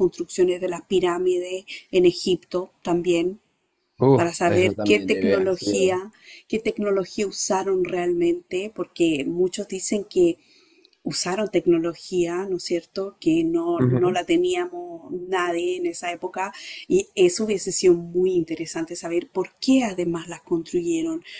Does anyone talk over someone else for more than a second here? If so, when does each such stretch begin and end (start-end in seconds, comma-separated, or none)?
4.1-5.9